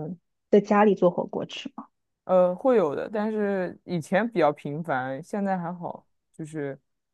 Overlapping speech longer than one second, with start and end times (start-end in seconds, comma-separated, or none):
none